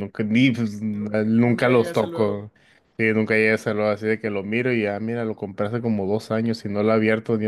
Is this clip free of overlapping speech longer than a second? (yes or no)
no